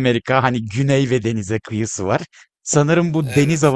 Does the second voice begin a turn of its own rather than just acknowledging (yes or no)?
no